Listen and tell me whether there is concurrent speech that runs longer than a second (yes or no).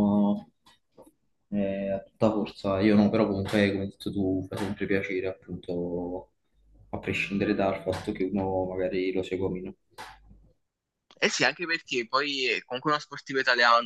no